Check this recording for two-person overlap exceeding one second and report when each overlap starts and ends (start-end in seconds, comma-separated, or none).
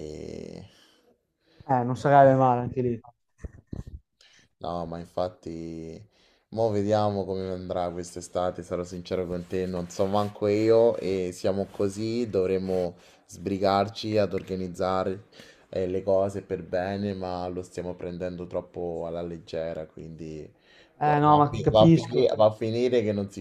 21.0-22.3